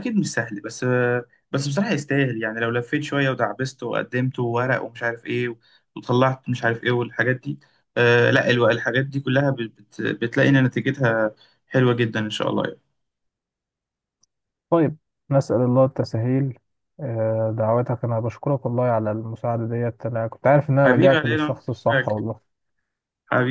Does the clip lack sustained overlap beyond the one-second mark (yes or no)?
no